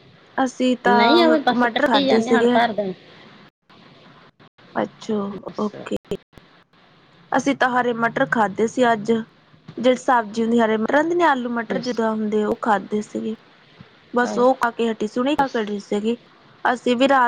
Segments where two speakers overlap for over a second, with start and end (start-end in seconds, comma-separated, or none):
0.9-2.6